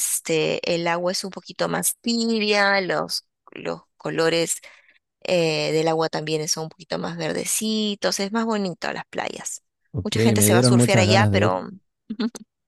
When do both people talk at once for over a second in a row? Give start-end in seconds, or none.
10.0-11.6